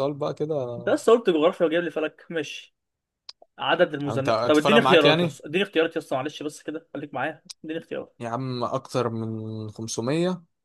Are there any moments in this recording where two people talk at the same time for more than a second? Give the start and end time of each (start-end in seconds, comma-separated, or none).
4.0-5.4